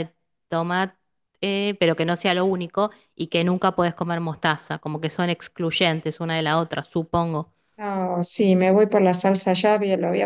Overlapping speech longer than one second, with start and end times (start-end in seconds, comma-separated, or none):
none